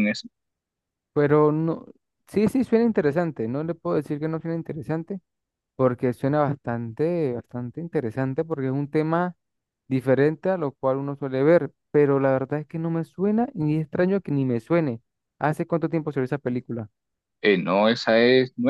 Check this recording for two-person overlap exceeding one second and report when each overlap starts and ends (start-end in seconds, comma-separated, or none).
none